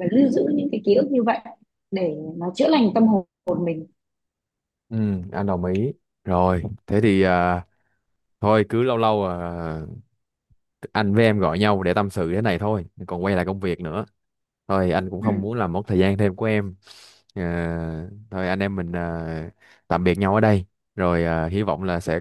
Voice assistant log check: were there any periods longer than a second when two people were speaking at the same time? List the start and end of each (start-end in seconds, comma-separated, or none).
none